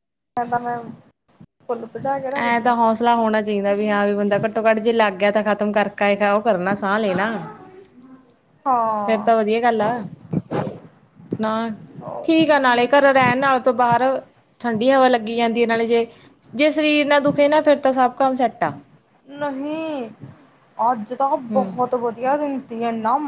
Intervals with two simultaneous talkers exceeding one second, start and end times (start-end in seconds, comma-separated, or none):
none